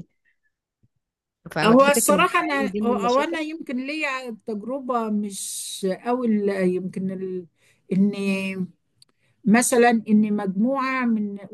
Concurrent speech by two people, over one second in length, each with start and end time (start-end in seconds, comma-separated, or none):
1.6-3.4